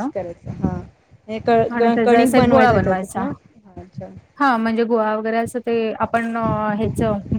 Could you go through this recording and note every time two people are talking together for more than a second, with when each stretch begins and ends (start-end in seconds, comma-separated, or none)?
2.0-3.2